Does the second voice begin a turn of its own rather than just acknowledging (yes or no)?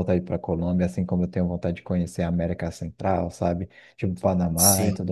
no